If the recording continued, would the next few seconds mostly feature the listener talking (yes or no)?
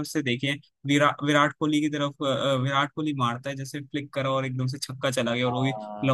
no